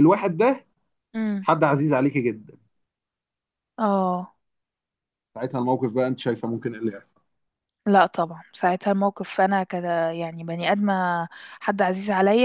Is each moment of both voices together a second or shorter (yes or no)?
yes